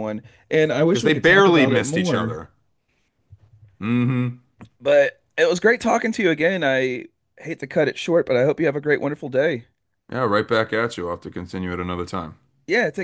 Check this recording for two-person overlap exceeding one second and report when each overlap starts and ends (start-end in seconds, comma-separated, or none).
0.8-2.4